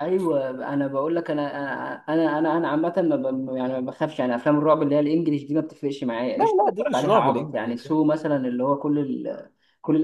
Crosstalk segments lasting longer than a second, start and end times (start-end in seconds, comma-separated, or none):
6.3-8.0